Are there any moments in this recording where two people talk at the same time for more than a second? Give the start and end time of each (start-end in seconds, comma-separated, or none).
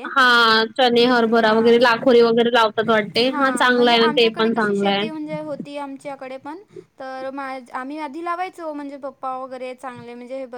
3.2-5.1